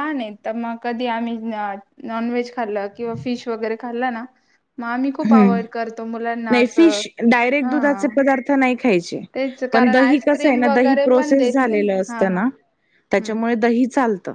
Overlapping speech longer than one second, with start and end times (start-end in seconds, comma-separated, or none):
9.7-12.4